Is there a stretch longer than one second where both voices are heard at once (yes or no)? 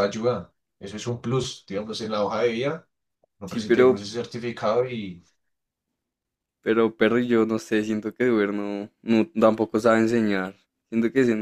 no